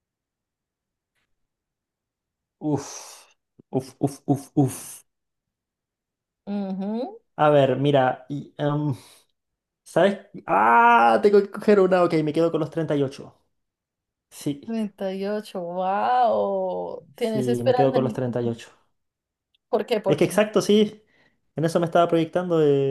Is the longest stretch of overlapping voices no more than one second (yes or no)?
no